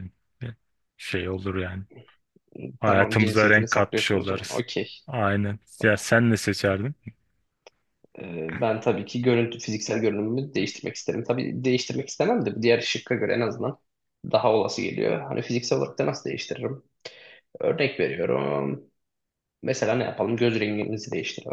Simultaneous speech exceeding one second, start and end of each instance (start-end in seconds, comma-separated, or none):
2.9-4.6